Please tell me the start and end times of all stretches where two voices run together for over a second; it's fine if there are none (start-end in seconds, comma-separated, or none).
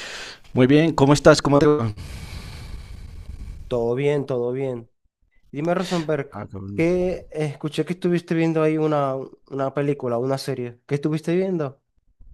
none